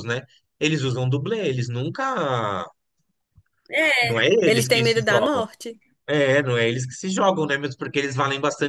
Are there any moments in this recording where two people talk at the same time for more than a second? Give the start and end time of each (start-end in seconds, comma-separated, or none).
4.0-5.5